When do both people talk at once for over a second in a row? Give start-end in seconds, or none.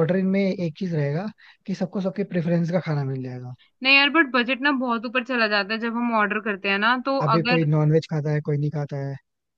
none